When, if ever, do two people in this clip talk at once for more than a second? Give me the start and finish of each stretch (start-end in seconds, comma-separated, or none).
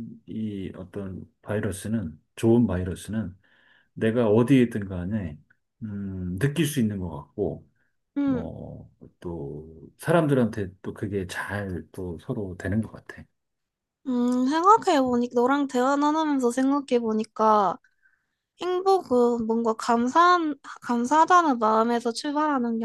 none